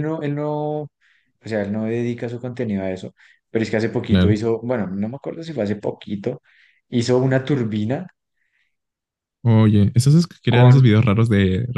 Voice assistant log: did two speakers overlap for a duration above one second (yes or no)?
no